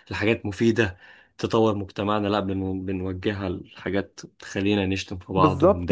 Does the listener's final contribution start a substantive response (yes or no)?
yes